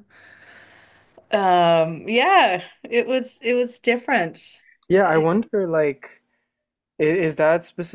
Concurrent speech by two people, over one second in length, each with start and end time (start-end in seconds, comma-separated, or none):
none